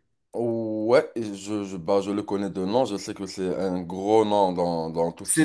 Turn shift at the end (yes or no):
yes